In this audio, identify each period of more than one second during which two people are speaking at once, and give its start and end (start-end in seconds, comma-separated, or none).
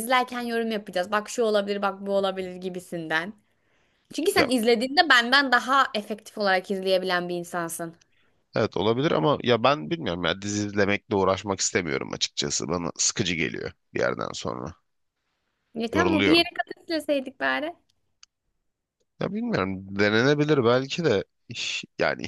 none